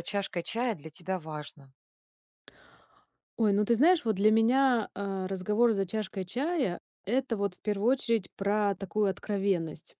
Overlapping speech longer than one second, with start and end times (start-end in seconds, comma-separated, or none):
none